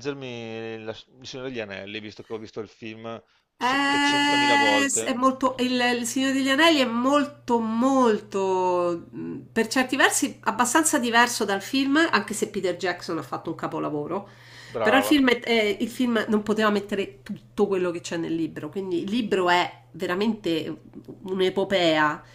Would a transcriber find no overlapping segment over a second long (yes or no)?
no